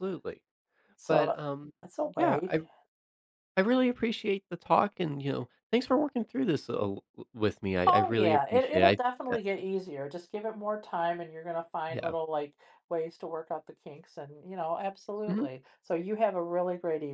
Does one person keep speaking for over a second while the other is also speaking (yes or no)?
yes